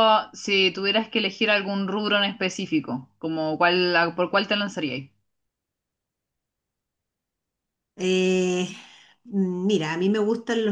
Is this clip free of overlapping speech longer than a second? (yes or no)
yes